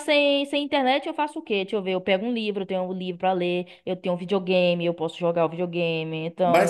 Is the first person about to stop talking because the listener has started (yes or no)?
yes